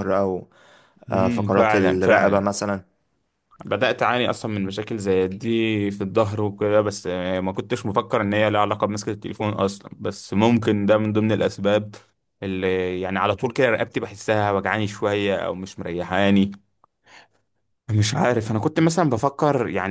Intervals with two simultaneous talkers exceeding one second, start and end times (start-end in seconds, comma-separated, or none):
1.1-2.5